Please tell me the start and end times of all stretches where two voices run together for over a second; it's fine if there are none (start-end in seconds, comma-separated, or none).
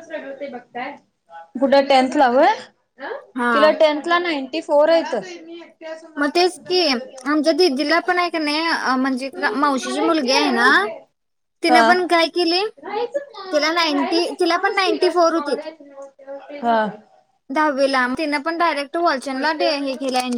13.5-15.5